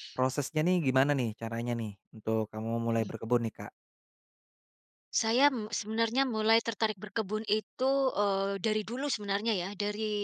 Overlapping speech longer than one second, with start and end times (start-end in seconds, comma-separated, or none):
none